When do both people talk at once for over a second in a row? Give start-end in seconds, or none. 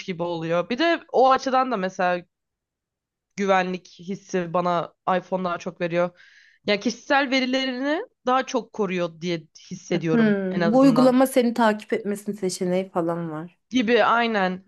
9.9-11.2